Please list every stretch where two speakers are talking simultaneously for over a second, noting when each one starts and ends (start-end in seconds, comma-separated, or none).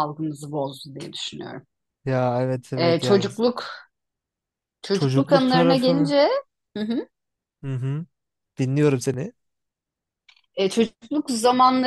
4.9-6.1